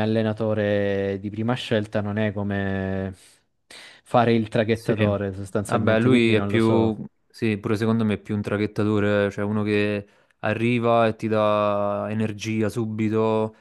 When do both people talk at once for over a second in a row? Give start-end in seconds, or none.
5.7-7.0